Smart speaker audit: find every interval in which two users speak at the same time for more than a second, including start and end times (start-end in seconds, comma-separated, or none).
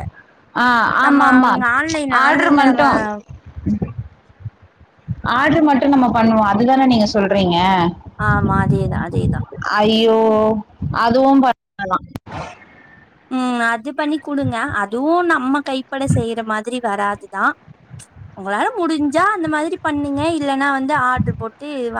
none